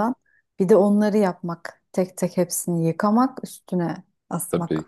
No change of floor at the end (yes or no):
no